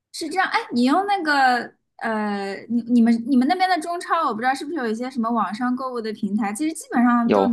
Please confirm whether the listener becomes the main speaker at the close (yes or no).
no